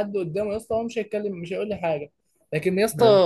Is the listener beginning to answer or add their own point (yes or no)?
no